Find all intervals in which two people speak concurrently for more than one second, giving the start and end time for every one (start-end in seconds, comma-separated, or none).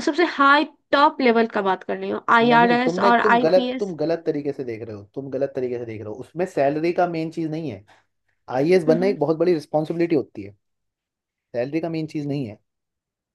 2.5-3.9